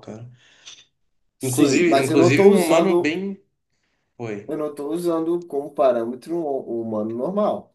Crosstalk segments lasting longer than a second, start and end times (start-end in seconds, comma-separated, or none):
1.4-3.1